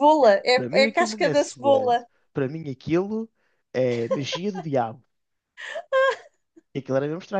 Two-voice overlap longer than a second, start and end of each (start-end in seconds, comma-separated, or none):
0.5-2.1